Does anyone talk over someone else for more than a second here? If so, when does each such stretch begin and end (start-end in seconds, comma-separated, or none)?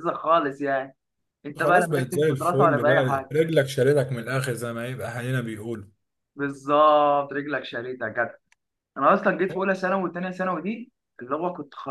1.6-3.3